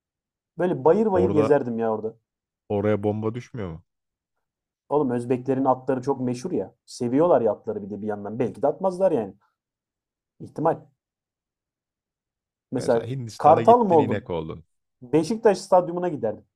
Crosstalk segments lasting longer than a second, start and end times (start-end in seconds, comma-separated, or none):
12.8-14.2